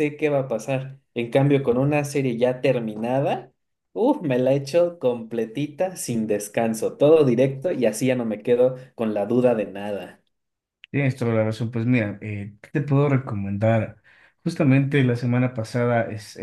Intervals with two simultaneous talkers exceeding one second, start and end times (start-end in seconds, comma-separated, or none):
none